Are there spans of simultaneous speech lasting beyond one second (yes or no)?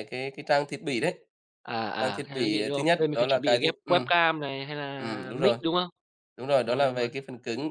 yes